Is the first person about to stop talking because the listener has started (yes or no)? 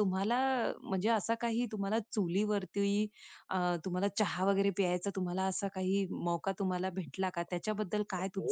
yes